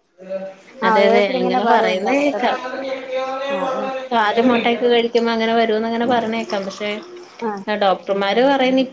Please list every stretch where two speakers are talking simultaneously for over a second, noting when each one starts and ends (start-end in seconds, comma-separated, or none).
0.9-2.5